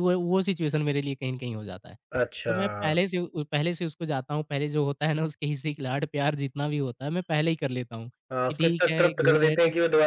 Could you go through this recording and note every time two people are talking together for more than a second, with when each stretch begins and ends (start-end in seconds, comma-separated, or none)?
8.3-9.6